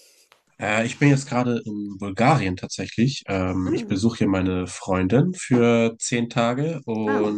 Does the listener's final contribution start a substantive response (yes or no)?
no